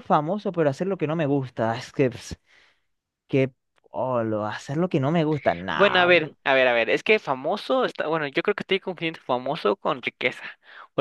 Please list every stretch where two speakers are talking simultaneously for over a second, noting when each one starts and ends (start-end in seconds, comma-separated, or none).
none